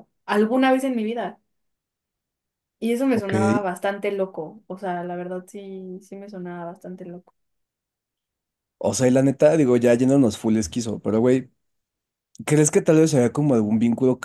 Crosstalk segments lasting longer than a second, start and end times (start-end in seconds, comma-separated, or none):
none